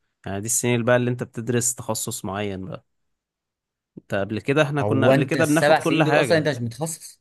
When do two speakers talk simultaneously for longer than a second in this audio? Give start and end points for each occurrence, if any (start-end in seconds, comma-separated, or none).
4.8-6.5